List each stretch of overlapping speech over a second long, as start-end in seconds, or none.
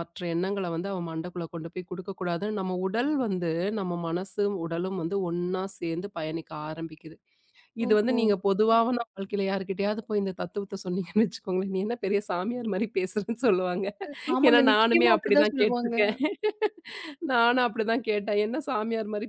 14.5-15.9